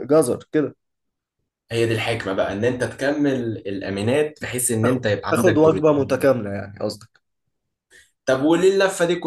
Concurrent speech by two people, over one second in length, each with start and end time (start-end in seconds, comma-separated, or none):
4.8-6.3